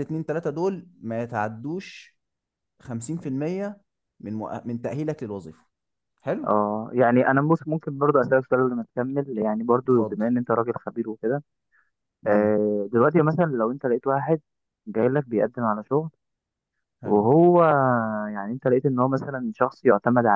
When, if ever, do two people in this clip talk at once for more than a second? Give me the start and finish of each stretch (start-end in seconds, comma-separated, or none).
none